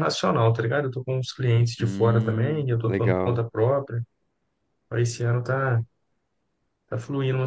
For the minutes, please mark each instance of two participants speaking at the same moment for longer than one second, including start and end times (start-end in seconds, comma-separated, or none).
1.8-3.4